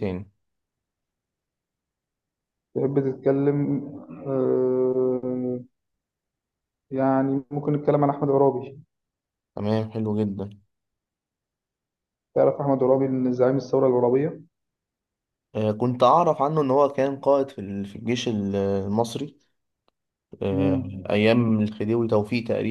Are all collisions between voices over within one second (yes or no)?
yes